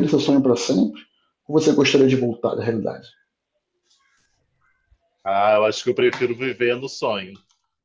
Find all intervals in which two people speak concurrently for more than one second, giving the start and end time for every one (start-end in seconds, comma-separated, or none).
none